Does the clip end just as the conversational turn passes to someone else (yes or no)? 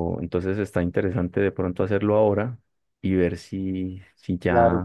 yes